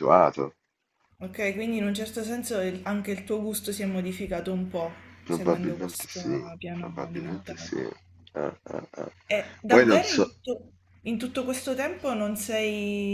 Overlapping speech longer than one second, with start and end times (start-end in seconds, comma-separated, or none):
5.3-7.7